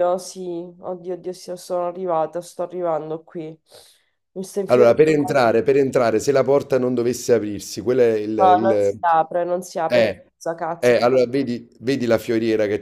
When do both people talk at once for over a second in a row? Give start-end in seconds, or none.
none